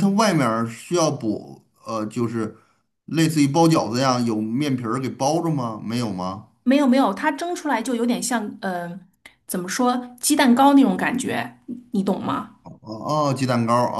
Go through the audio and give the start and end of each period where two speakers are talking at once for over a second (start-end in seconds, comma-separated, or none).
none